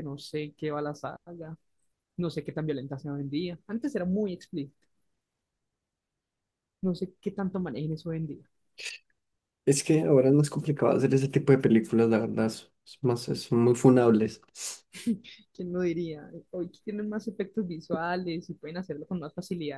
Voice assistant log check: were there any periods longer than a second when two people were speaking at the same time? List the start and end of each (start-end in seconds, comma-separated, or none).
none